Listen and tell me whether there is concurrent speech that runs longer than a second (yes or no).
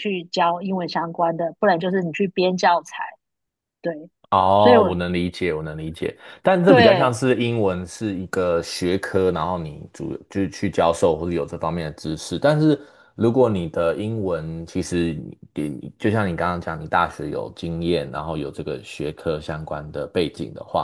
no